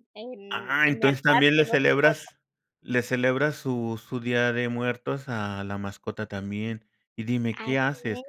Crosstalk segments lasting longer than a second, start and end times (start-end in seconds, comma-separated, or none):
0.5-2.3